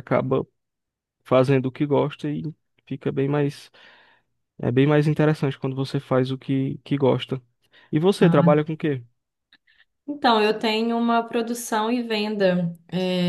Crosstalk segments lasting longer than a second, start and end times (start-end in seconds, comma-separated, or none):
none